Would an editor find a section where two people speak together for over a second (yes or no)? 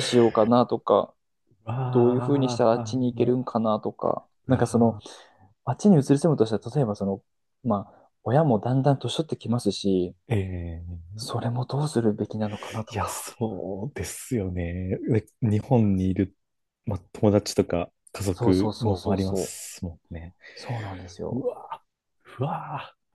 yes